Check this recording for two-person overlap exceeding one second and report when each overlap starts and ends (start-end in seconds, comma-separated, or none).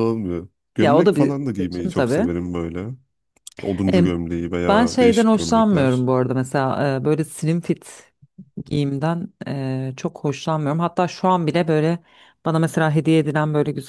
0.8-2.2, 4.7-6.1